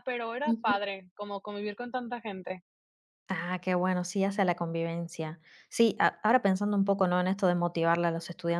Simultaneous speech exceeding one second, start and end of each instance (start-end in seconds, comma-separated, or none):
none